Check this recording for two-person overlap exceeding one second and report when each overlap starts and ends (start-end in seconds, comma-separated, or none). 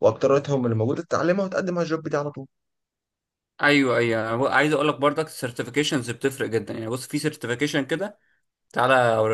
none